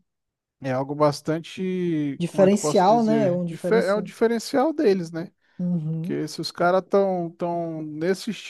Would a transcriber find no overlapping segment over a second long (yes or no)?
no